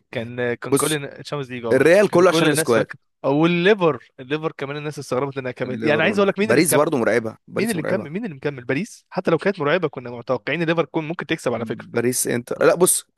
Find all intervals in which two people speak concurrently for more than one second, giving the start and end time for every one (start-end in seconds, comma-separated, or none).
1.7-2.9, 5.7-6.9